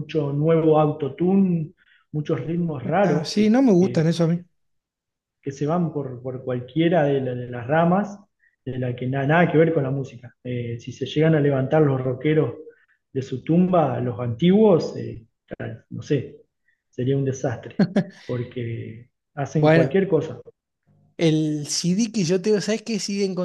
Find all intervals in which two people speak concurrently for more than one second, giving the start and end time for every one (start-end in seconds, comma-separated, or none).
3.0-4.4